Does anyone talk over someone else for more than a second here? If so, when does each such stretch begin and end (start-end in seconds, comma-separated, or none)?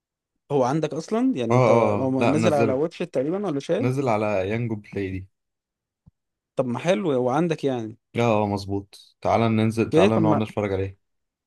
1.5-2.8